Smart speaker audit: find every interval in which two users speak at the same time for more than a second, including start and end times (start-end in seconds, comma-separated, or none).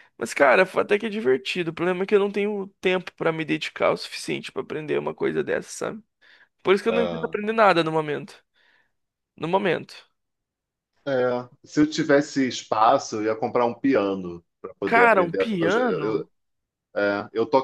14.8-16.3